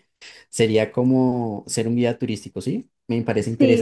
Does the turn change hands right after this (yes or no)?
yes